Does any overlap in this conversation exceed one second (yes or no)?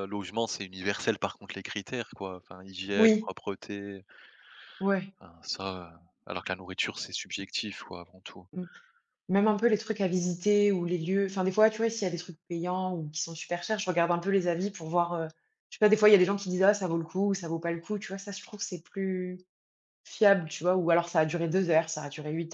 no